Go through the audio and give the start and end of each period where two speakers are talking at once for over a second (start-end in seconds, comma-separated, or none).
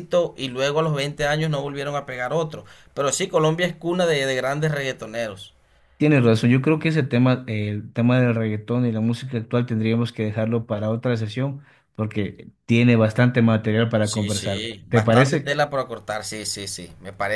14.0-15.6